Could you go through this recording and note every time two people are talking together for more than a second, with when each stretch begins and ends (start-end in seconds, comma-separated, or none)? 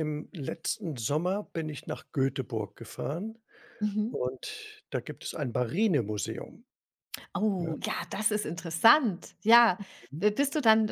none